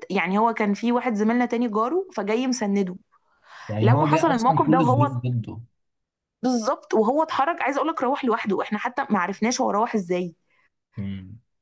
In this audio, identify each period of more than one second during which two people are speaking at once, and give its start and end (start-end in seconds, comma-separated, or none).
3.8-5.1